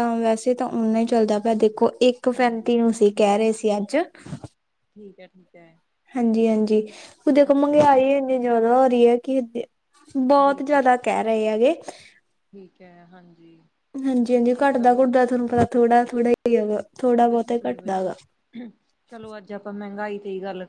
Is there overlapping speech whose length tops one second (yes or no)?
no